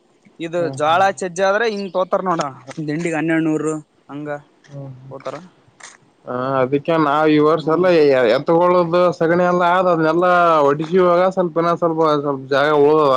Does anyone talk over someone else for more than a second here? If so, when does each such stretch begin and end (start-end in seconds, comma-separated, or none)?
none